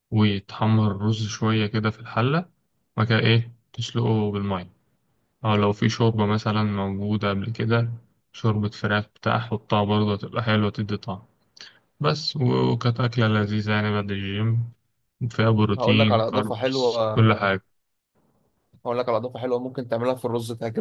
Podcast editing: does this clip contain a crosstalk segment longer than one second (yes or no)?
yes